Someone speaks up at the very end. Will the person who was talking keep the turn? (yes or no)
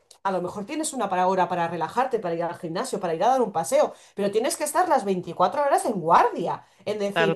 yes